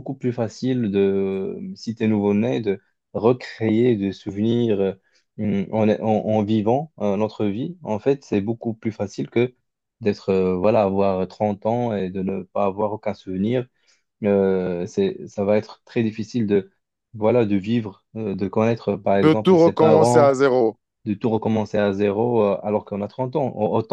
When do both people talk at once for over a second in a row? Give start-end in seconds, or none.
19.1-20.4